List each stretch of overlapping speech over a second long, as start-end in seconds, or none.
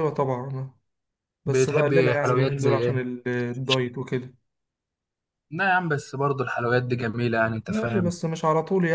1.5-3.0